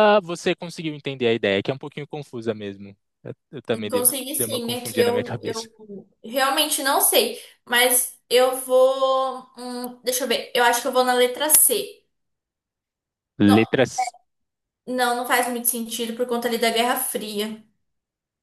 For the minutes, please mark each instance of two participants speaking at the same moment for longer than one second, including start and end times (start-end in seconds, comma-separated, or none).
3.9-5.7